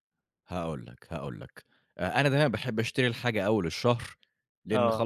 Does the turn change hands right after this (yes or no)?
no